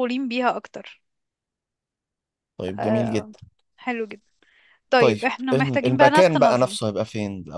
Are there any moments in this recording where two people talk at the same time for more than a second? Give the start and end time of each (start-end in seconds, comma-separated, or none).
5.0-6.8